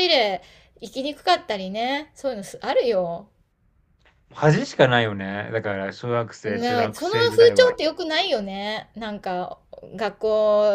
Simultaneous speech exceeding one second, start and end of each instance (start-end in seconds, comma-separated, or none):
6.4-7.8